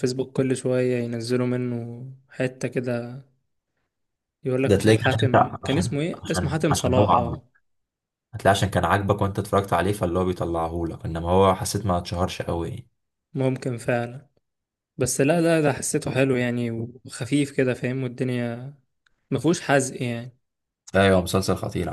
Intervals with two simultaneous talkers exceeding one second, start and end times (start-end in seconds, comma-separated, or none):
4.7-7.4